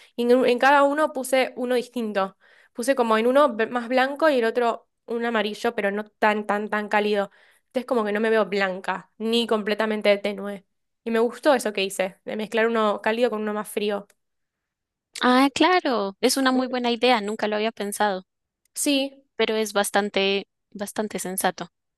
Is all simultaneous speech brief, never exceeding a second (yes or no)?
yes